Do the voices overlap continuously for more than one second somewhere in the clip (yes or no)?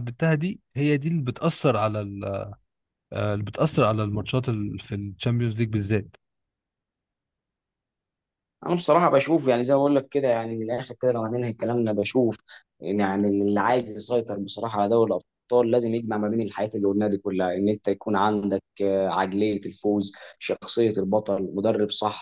no